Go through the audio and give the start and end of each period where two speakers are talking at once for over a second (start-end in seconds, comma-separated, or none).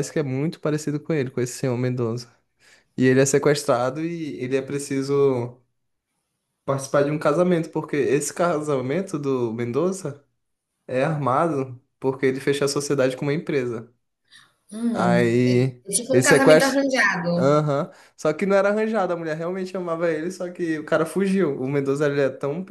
14.9-16.8